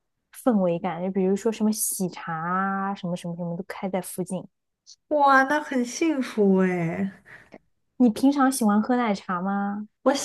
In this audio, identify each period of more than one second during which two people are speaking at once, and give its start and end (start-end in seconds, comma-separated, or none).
none